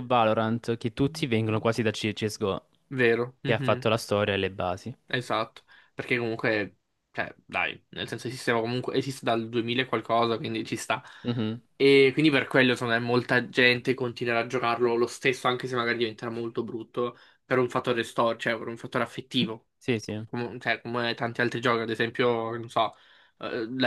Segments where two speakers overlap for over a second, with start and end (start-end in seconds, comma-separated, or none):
none